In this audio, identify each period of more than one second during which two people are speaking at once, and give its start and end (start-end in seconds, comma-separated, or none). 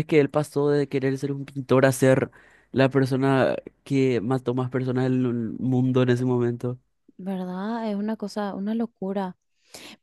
none